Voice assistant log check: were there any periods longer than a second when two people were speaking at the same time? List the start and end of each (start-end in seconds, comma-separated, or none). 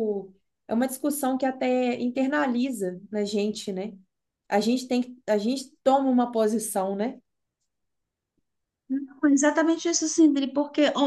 none